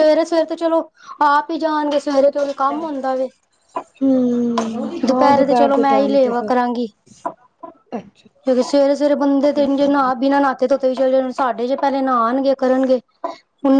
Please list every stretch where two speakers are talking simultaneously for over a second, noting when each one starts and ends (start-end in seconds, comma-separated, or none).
5.0-6.5